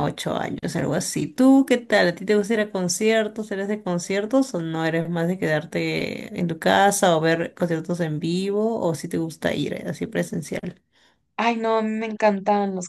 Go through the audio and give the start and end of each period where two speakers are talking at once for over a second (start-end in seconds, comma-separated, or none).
none